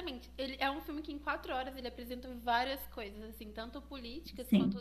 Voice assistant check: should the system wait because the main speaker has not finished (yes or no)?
yes